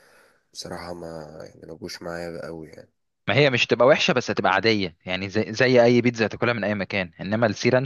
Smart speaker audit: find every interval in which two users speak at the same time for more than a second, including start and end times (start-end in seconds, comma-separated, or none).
none